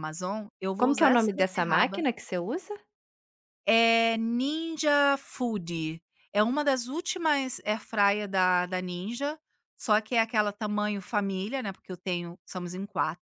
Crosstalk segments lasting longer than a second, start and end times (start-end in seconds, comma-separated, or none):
0.8-2.0